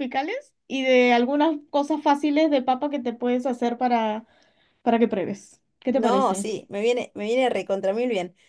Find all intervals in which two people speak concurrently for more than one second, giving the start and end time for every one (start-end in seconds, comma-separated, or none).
none